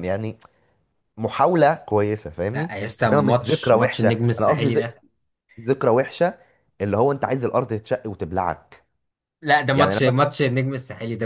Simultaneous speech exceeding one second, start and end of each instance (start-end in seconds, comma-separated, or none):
2.5-4.9